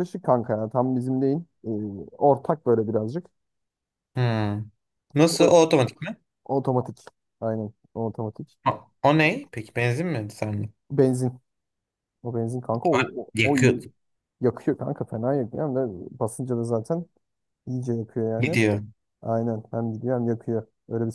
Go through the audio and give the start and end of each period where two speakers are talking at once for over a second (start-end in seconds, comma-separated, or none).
none